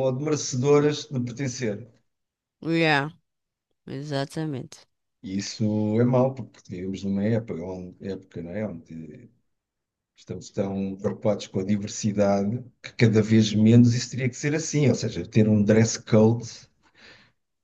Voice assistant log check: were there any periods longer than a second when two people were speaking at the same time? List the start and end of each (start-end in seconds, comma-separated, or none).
none